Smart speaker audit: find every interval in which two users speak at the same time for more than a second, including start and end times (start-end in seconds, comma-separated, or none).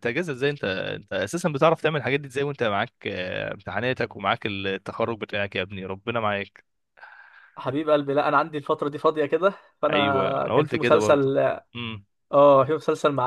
9.9-11.3